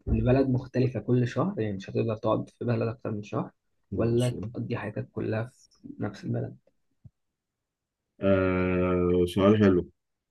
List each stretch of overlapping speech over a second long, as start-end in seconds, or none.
none